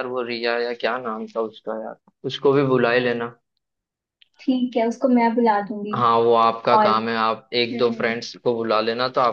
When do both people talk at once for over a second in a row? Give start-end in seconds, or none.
none